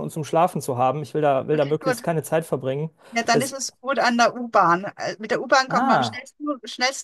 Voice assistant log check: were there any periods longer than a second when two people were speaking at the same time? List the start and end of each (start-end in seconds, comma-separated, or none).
none